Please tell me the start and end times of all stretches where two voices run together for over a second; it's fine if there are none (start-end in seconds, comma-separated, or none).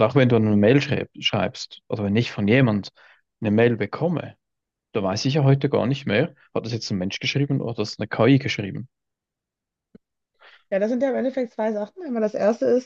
none